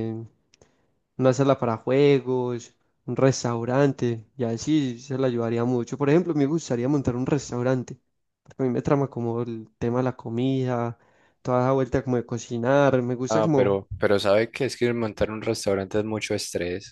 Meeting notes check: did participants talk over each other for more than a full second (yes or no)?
no